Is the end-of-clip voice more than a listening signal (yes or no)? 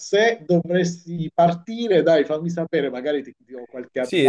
yes